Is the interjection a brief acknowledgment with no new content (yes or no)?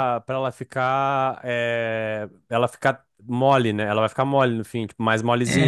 no